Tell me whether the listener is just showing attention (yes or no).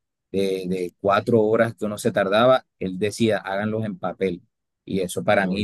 yes